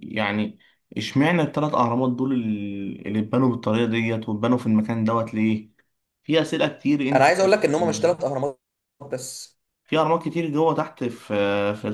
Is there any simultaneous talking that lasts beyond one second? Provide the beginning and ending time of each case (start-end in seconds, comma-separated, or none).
none